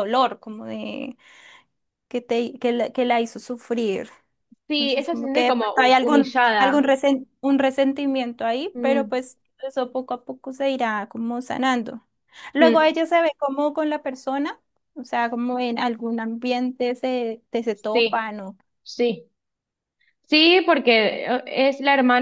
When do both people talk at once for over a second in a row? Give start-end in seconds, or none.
4.7-7.0